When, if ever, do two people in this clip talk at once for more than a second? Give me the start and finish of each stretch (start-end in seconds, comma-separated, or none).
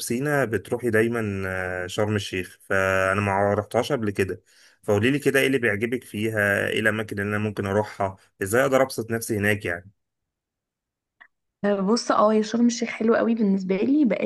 none